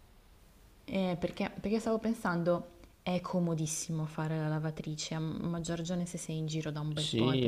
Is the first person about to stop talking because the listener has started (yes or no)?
yes